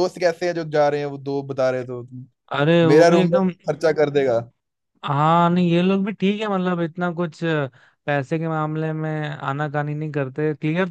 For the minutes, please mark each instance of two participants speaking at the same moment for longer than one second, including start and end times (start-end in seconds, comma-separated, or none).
none